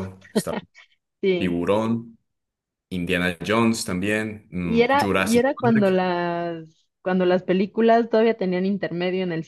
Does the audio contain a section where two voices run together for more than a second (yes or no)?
yes